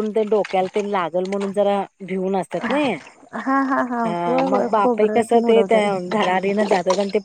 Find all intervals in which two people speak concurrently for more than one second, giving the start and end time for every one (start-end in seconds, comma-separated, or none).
4.0-5.9